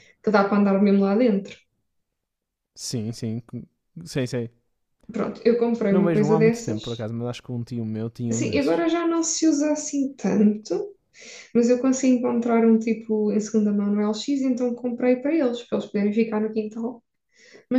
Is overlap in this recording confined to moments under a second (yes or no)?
no